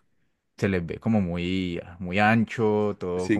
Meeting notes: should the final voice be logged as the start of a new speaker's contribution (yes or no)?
yes